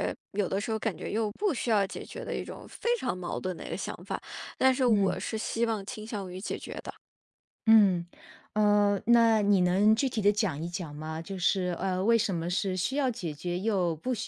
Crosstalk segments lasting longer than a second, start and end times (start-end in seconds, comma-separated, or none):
none